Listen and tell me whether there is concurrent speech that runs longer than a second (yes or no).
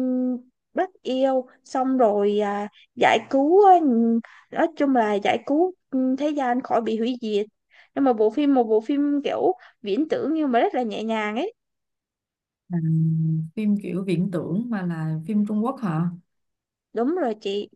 no